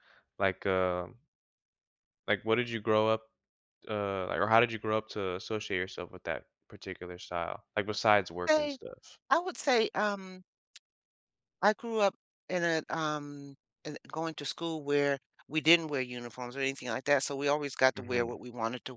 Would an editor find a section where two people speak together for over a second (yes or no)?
no